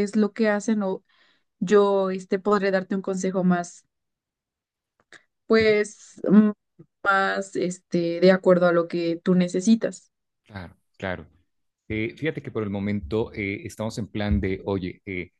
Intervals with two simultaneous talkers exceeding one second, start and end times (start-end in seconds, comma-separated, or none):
none